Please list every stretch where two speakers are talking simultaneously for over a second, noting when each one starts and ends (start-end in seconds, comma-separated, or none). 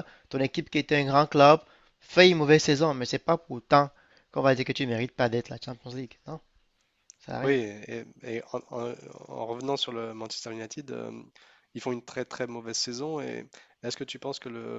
none